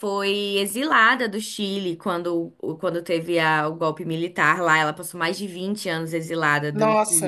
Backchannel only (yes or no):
yes